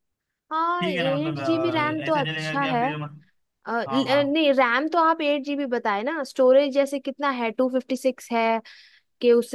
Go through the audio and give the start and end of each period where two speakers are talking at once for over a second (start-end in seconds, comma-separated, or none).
0.8-2.8